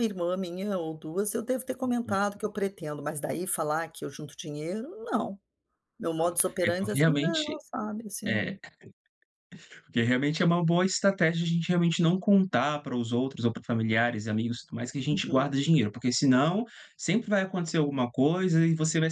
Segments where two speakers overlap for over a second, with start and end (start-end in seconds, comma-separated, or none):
6.2-7.6